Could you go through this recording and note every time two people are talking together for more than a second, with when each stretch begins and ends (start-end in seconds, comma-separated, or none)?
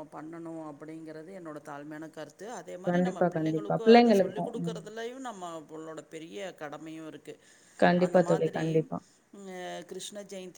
2.9-4.8